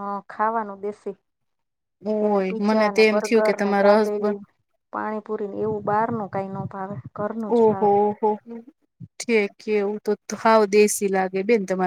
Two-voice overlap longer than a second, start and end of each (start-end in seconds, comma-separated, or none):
2.2-4.4